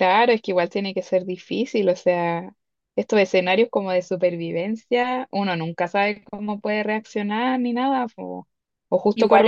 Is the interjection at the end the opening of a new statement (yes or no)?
no